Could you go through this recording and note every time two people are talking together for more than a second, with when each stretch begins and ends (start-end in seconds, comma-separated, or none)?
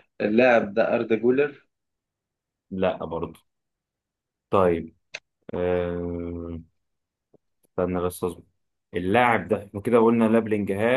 none